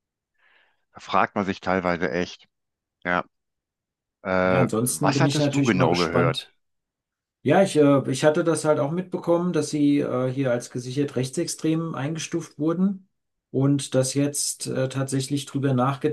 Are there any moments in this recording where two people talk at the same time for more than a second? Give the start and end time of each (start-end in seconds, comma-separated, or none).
4.4-6.5